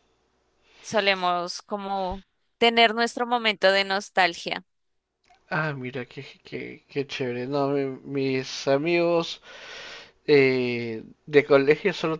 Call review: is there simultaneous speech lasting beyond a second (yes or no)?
no